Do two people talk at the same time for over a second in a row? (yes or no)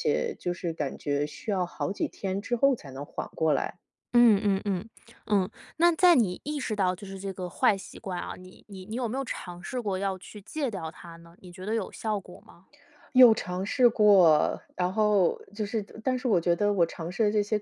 no